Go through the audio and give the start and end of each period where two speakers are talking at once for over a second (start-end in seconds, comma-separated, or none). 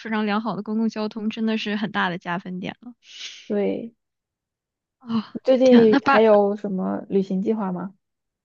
none